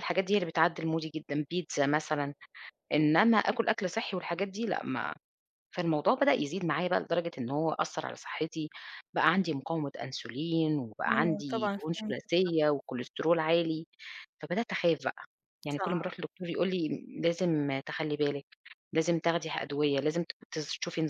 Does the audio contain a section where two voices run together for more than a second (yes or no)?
yes